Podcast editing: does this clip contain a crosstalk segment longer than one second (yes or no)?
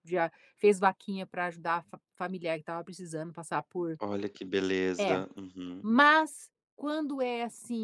no